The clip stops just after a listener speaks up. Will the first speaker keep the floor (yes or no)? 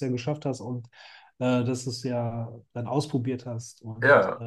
yes